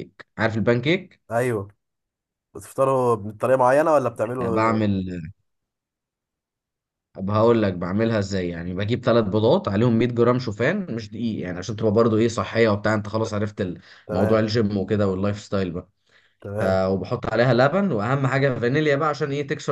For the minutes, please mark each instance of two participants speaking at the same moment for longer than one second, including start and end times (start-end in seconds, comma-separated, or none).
none